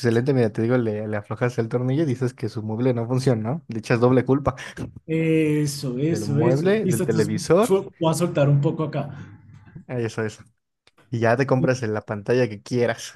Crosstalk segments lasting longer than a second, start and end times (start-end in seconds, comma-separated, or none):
6.1-7.7